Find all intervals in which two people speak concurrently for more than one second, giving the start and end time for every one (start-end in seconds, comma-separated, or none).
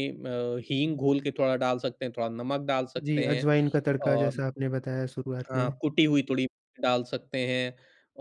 none